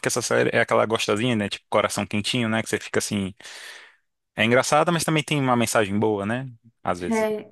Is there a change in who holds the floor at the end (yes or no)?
yes